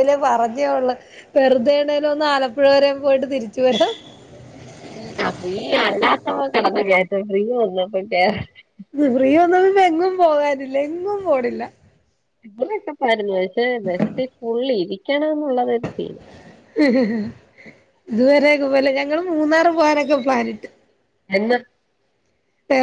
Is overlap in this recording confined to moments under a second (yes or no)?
yes